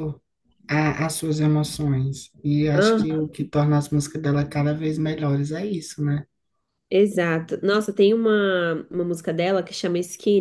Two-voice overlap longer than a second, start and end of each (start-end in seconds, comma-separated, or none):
none